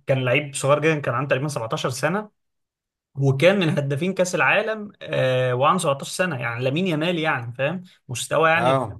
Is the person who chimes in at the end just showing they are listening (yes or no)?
yes